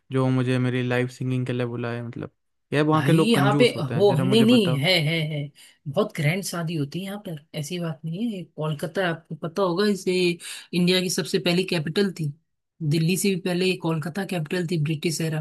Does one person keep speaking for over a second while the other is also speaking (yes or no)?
yes